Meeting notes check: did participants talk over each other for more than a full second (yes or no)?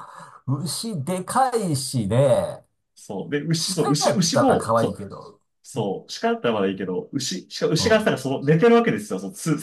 yes